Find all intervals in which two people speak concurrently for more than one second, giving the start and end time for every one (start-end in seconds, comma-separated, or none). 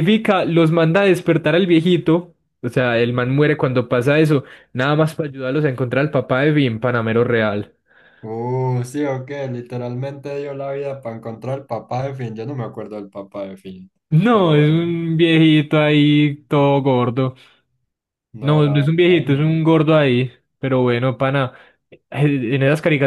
18.4-19.6